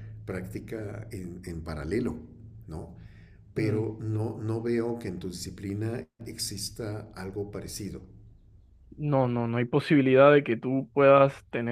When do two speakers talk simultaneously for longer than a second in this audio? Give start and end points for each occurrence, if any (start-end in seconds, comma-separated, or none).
none